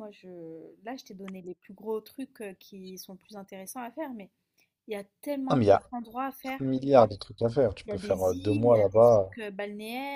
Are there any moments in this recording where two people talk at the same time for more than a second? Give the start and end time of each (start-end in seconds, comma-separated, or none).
7.9-9.3